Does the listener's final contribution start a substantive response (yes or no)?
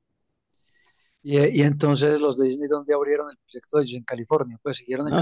yes